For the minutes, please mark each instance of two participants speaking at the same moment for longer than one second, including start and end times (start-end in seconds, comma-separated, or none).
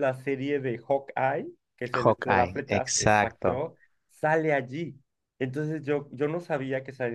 1.9-3.6